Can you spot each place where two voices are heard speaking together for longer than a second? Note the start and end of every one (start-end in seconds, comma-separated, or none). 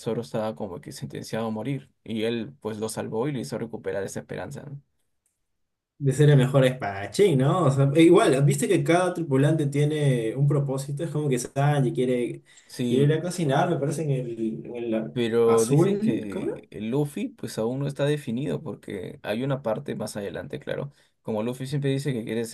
15.1-16.6